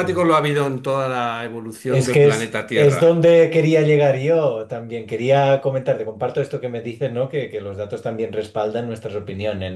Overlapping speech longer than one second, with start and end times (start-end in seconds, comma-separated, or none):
1.8-3.2